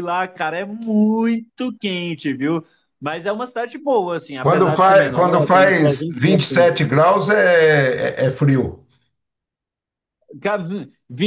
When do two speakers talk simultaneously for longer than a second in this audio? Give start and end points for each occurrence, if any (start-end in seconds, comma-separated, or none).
4.4-6.4